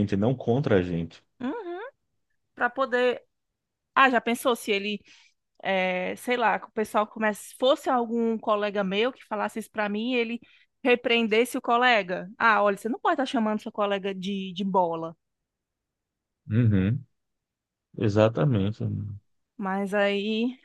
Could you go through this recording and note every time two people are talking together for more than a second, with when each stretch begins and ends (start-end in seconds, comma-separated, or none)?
none